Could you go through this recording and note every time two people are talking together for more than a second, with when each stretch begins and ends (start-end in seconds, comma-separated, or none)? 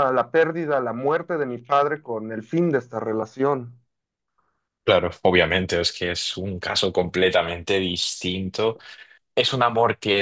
none